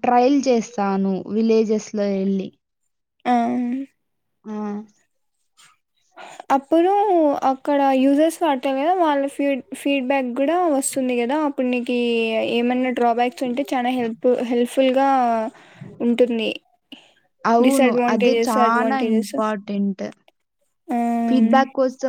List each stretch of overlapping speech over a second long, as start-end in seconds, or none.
17.7-19.3